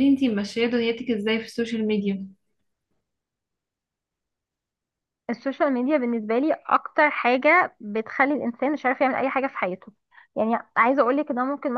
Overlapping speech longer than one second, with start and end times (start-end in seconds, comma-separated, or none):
none